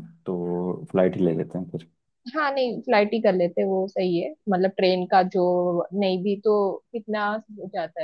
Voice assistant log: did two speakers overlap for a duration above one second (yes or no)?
no